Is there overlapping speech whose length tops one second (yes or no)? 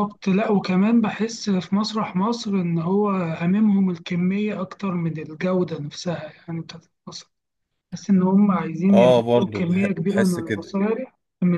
yes